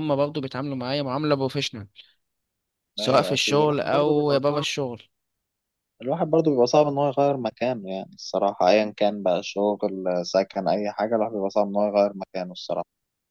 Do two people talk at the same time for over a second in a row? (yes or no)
yes